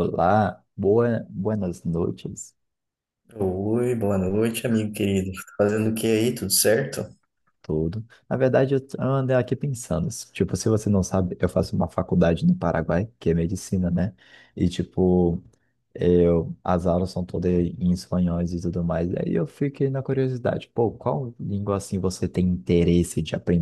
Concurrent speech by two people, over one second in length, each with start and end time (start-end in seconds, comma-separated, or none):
none